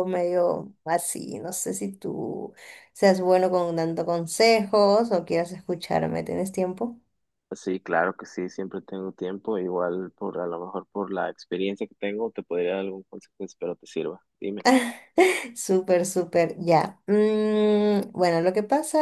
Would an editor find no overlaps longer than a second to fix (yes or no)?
yes